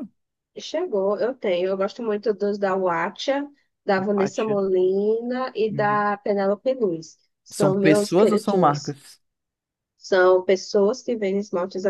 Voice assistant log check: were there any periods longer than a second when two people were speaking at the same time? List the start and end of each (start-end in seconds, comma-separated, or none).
7.5-8.9